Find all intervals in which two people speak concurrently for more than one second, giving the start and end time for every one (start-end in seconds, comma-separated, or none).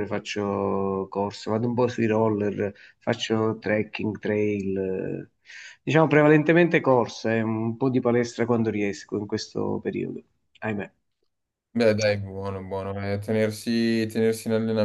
none